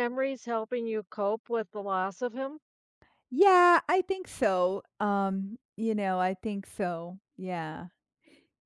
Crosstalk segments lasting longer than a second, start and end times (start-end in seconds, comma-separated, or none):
none